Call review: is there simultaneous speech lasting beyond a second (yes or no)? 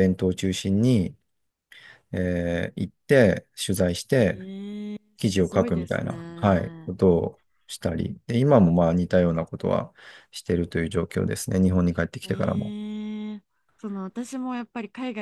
yes